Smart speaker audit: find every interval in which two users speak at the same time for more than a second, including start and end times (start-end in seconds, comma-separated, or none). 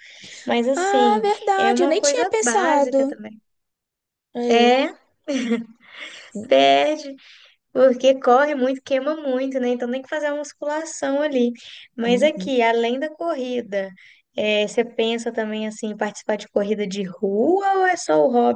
0.7-3.1